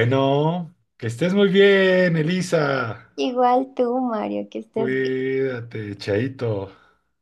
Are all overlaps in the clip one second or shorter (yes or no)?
yes